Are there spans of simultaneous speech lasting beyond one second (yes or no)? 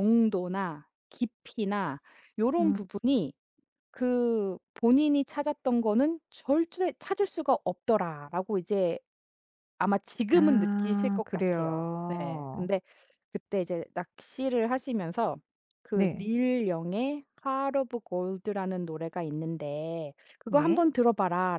yes